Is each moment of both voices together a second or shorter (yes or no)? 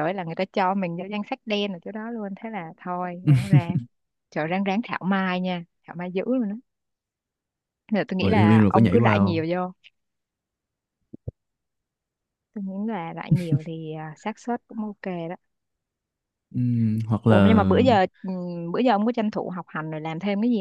no